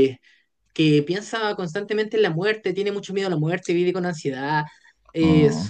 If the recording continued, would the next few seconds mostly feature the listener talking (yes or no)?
no